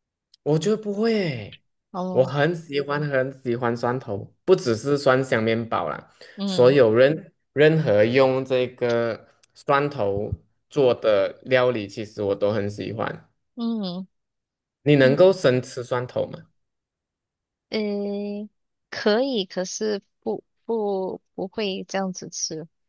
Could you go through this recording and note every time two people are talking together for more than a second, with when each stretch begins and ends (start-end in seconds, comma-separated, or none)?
none